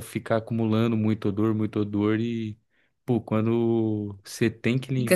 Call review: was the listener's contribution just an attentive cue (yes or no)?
no